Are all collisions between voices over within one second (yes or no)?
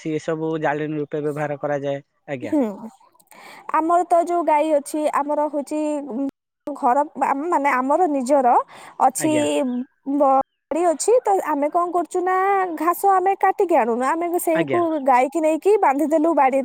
yes